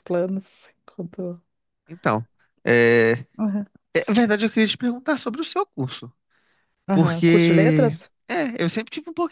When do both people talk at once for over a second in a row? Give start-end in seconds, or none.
6.9-8.1